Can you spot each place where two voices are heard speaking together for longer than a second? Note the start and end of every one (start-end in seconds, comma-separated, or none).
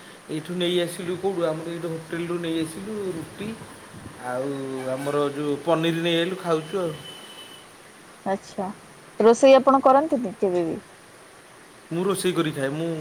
none